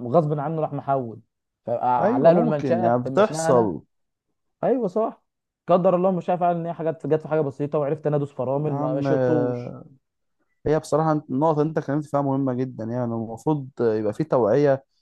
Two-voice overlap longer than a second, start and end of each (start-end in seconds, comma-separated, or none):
2.0-3.7, 8.5-9.8